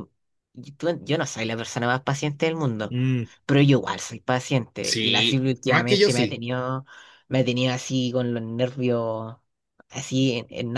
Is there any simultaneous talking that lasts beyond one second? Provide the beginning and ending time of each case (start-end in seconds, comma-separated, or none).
4.8-6.4